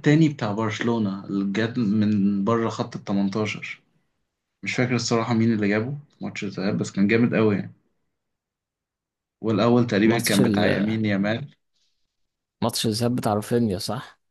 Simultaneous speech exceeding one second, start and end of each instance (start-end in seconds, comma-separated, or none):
none